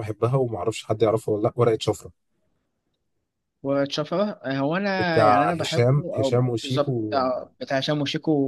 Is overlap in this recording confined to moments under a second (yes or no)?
no